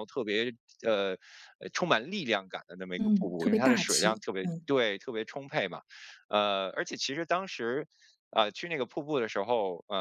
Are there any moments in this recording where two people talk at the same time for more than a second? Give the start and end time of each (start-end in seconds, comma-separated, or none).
3.0-4.7